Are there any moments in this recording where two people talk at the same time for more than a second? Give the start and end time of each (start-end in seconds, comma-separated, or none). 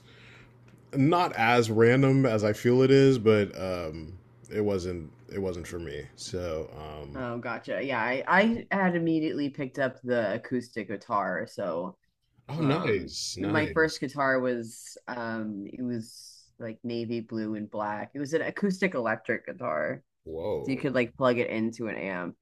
12.6-14.0